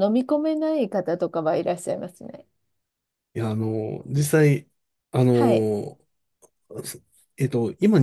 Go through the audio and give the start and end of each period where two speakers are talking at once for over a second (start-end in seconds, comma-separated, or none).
none